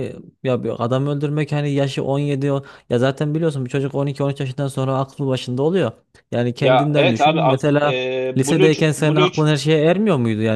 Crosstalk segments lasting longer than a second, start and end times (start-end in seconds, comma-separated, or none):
6.6-9.5